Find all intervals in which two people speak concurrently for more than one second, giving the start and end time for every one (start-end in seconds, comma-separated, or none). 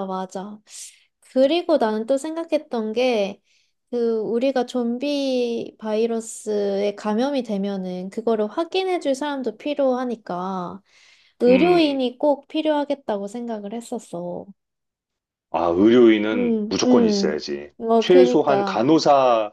16.3-18.9